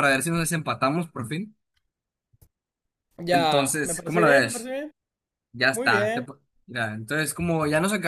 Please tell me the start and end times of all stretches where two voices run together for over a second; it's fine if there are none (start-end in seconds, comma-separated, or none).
3.3-4.7